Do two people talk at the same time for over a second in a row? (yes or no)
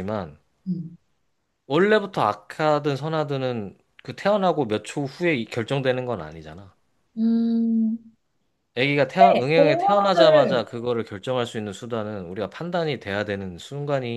yes